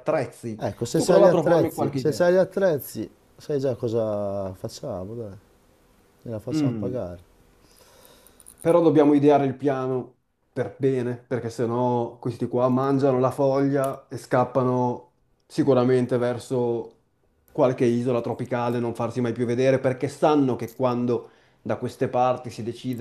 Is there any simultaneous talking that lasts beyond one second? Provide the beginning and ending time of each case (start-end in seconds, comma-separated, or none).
0.6-2.3